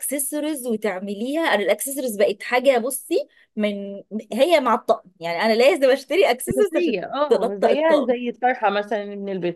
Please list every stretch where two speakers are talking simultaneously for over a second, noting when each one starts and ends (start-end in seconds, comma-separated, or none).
6.5-8.1